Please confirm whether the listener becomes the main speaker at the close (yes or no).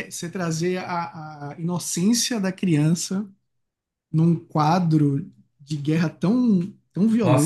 yes